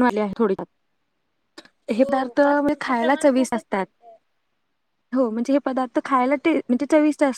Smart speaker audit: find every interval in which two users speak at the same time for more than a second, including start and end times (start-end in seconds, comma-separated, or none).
2.0-3.9